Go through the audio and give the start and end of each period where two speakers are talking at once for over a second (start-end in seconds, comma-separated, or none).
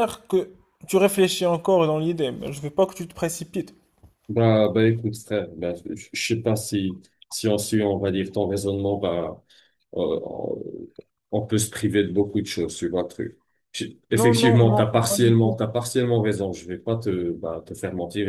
14.1-15.6